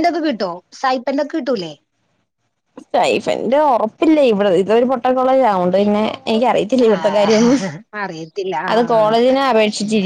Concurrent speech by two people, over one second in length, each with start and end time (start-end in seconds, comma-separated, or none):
none